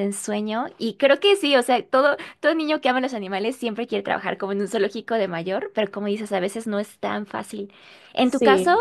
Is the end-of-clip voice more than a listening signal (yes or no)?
no